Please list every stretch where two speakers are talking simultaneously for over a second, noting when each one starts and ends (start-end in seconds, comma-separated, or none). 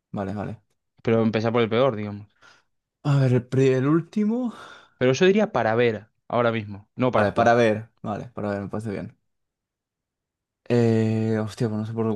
none